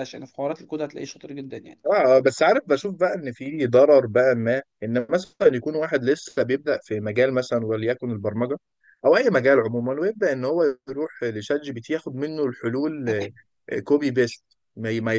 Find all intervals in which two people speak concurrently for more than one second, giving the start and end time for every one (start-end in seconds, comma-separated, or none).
none